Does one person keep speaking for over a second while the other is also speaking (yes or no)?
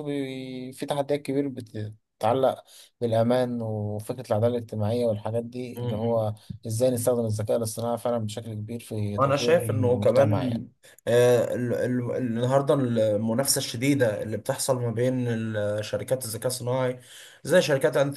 yes